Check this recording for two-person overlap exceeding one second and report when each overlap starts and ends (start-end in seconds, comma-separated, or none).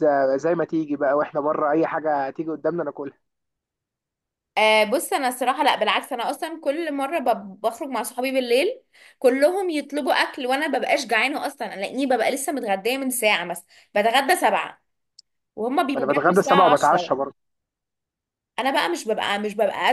15.9-17.2